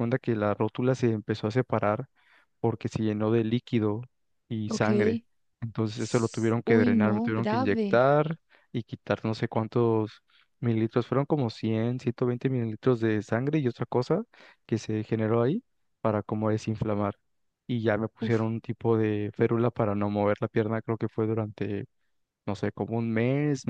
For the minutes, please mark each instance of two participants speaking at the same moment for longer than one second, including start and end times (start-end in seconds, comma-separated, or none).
6.6-8.1